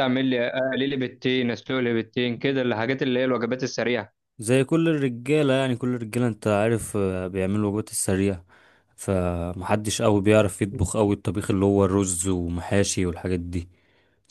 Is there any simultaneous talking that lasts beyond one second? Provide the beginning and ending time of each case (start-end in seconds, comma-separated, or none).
none